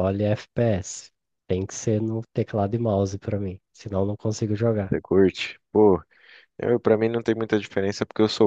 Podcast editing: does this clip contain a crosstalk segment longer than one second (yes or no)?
no